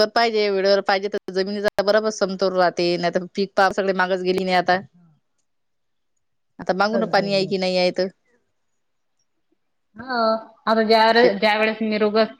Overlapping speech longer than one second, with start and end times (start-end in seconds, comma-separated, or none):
none